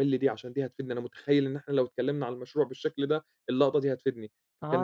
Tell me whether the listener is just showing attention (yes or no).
no